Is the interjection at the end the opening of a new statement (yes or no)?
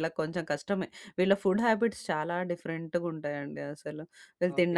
yes